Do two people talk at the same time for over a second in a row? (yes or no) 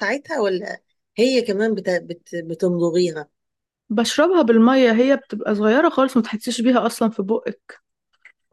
no